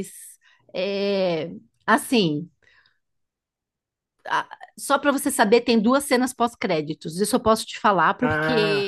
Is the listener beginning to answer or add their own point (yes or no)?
no